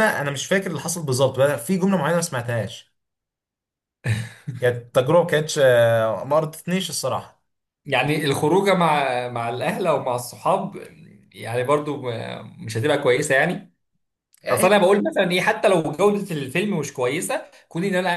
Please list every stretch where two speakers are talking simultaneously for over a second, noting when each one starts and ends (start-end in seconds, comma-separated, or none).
none